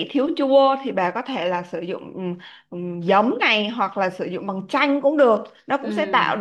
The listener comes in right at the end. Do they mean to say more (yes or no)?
no